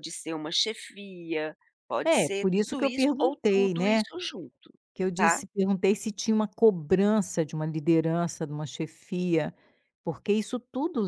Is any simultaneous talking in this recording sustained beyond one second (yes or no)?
yes